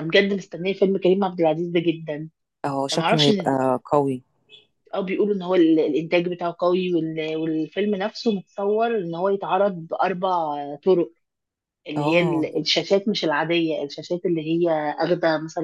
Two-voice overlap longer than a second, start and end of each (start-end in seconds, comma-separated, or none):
none